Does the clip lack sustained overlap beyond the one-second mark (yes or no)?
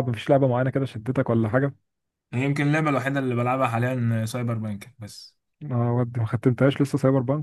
yes